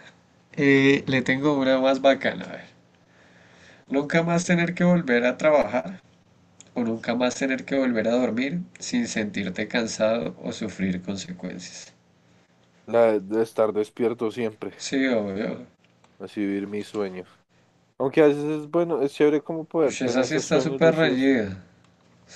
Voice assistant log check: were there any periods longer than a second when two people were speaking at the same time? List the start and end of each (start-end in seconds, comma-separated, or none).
19.9-21.4